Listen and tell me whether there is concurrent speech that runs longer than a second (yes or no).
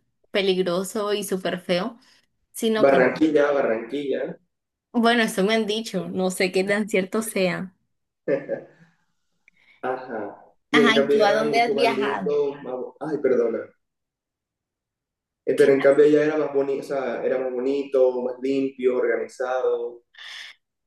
yes